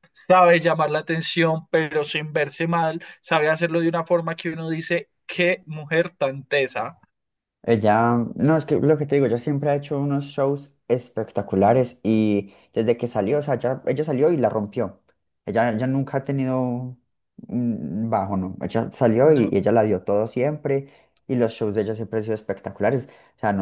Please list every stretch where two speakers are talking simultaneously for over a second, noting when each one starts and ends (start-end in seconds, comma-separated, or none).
none